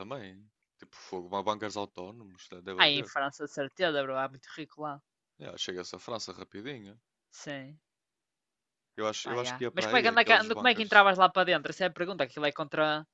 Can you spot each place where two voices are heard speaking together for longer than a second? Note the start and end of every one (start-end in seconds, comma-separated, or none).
9.2-11.1